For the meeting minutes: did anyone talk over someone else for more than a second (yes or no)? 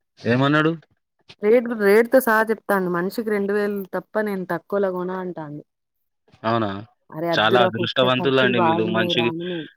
yes